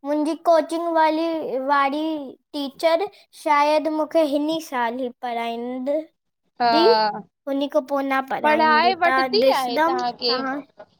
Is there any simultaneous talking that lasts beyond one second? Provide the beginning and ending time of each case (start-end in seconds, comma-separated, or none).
8.4-10.3